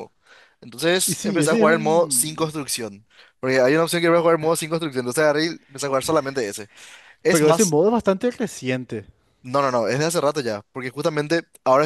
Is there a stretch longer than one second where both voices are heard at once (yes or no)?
yes